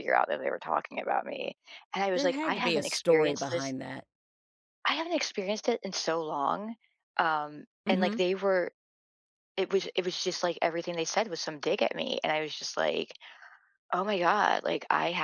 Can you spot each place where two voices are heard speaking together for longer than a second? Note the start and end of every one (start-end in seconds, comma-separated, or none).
2.1-3.7